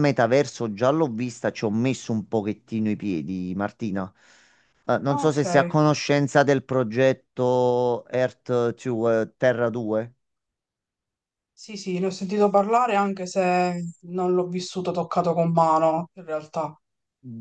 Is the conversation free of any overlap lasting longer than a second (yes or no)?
yes